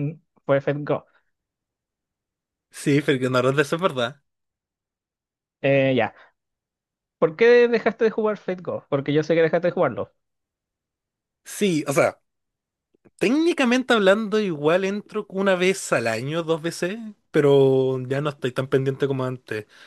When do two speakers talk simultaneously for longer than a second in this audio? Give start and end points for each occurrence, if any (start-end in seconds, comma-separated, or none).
none